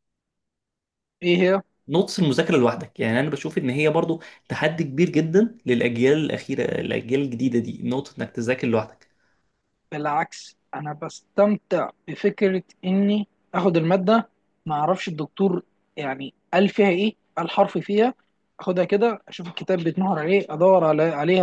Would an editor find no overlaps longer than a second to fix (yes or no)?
yes